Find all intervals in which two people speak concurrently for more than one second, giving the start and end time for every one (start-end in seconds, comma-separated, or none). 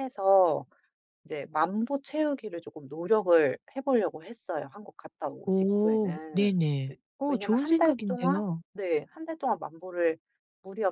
5.5-8.6